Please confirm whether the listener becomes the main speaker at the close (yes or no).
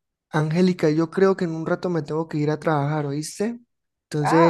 no